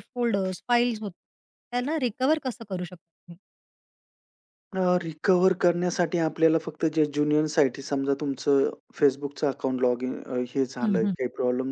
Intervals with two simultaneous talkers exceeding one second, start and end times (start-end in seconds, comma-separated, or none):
none